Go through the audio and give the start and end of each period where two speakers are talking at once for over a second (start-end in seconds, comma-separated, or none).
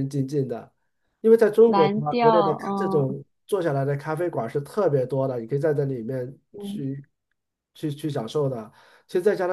1.6-3.1